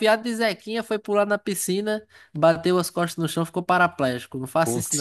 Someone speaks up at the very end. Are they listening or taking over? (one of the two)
taking over